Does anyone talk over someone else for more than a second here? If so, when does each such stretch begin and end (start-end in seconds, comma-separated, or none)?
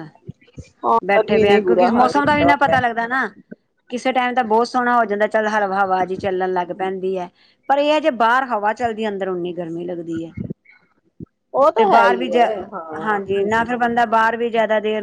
1.1-2.8